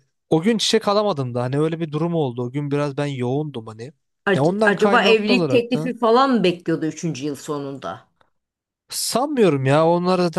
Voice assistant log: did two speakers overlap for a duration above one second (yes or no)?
yes